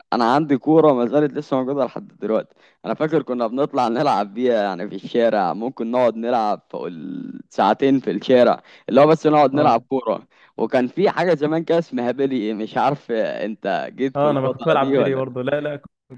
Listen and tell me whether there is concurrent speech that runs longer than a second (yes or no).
yes